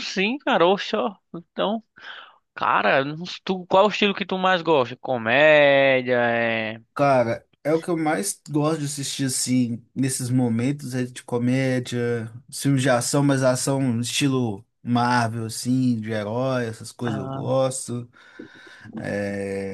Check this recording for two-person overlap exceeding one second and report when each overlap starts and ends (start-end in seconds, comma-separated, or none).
none